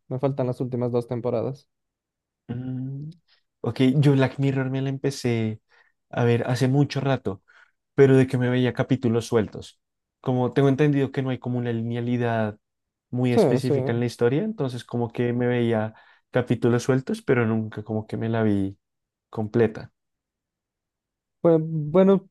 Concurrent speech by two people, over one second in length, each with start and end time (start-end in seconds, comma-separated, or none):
none